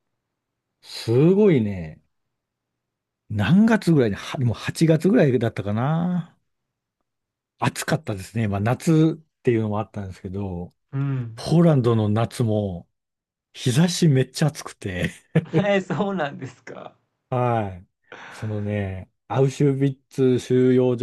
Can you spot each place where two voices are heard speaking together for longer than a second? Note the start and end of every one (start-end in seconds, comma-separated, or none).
none